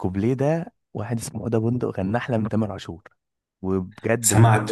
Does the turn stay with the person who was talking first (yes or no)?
no